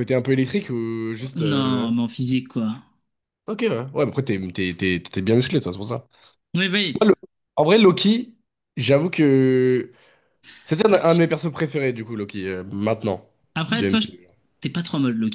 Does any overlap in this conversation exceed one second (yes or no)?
no